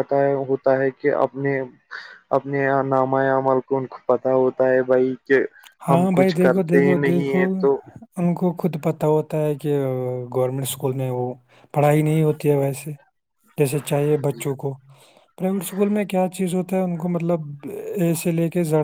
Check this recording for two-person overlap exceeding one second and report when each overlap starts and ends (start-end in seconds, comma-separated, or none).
5.9-7.4